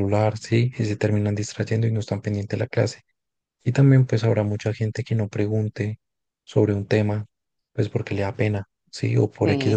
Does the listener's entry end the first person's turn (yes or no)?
no